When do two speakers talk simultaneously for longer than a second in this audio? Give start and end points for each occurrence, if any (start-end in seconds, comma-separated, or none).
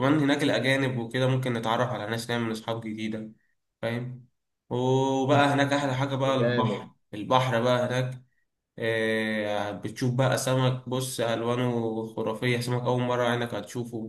5.3-6.9